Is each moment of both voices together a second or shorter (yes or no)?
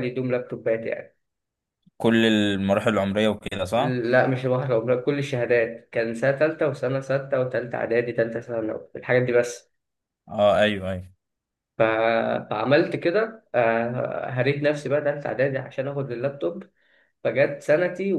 yes